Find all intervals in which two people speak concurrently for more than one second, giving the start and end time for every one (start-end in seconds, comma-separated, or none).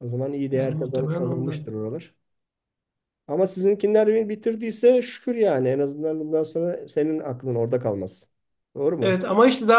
0.5-1.8